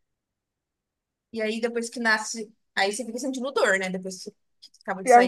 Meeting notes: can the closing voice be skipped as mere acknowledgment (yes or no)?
no